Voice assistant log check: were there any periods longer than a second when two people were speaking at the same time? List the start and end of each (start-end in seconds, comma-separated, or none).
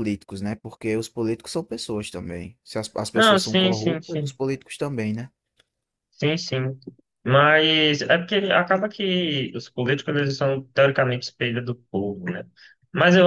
3.1-4.4